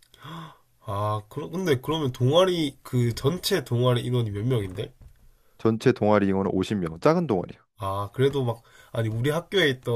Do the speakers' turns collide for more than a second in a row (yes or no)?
no